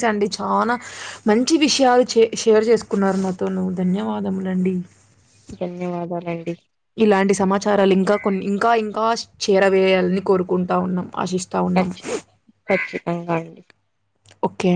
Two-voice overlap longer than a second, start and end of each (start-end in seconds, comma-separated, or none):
none